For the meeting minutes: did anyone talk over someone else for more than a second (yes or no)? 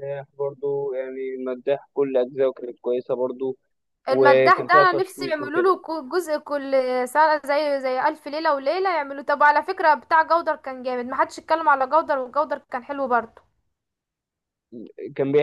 yes